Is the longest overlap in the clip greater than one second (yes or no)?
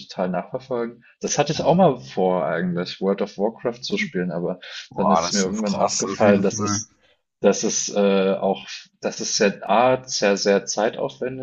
yes